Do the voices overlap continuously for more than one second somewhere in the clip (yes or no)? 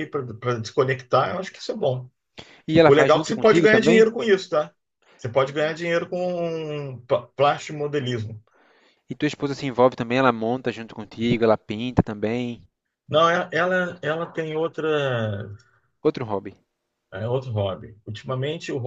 yes